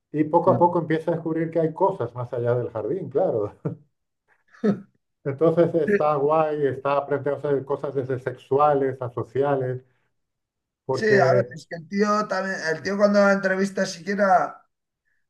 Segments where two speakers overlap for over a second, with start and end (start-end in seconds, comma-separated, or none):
none